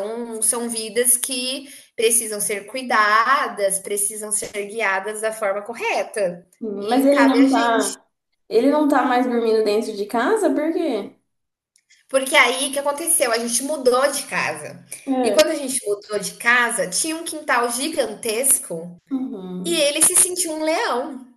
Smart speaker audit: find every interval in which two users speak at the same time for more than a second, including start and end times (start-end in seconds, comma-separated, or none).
6.6-8.0